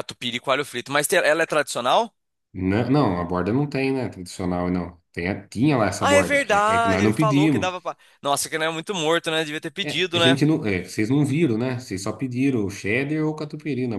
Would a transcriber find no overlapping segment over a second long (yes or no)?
no